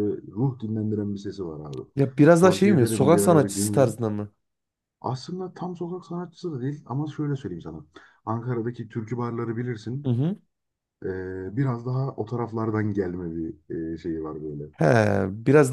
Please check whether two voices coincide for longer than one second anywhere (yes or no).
yes